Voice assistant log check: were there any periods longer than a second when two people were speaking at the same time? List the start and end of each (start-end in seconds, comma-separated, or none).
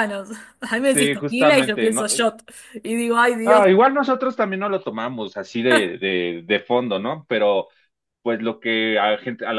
0.9-2.3